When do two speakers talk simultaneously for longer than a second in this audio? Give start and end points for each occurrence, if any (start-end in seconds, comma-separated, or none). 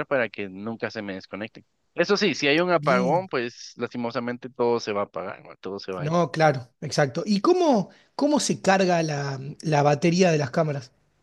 none